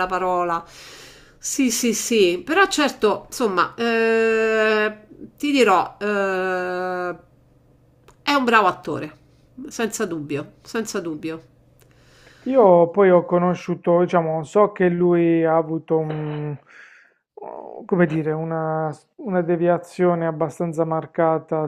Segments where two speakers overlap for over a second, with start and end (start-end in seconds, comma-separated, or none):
none